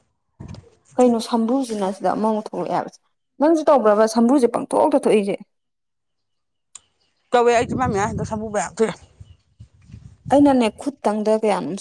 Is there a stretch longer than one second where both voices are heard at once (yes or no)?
no